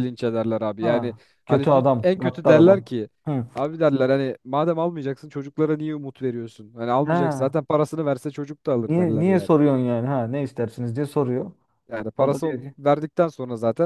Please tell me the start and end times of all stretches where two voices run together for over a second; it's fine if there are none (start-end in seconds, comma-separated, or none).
0.8-2.9